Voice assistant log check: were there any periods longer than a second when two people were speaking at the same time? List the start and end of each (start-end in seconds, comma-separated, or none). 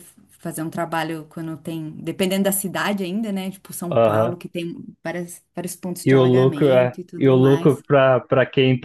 6.0-7.8